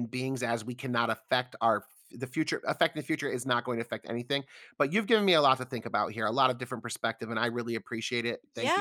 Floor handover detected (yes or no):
yes